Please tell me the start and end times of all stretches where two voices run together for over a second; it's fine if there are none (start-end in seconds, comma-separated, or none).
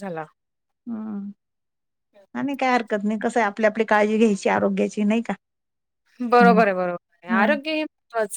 none